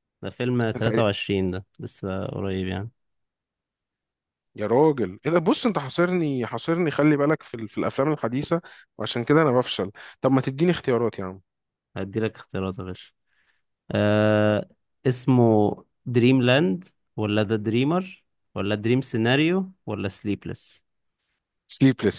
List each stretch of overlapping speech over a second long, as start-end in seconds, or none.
none